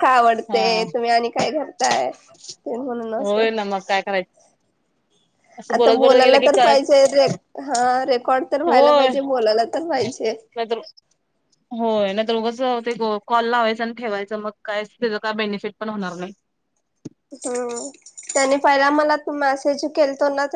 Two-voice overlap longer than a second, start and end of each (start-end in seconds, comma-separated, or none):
5.7-7.0